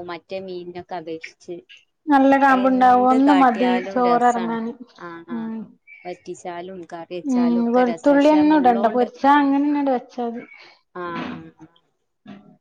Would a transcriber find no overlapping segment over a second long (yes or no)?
no